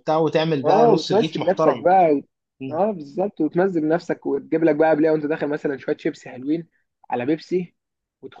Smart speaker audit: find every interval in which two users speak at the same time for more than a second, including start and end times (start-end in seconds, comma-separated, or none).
0.7-1.9